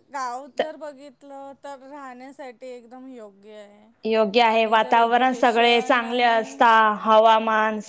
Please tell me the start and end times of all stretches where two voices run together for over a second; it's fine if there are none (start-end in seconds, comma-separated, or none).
4.5-6.6